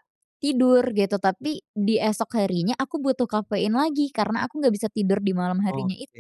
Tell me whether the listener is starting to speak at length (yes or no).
yes